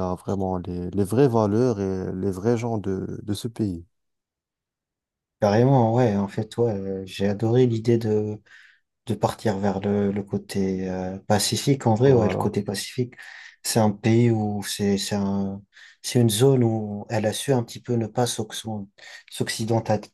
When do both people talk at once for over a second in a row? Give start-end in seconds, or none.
none